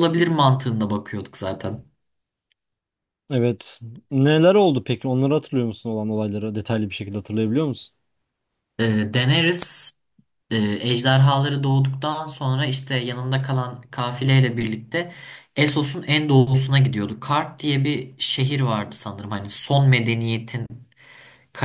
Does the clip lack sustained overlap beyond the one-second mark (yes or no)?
yes